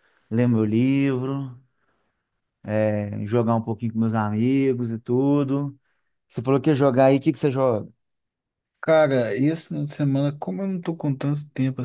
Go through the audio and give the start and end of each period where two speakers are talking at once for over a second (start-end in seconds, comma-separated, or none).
none